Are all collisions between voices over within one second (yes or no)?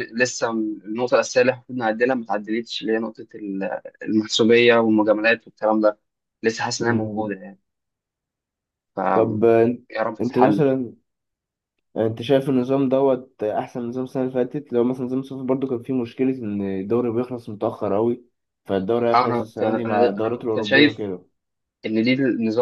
no